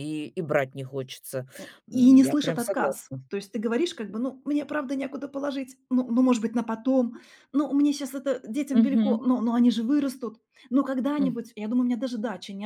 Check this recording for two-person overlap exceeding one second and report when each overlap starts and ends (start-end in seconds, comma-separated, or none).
1.9-3.3